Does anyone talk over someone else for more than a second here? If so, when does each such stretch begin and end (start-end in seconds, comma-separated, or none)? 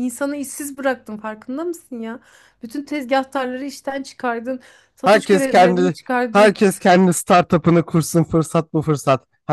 5.0-6.6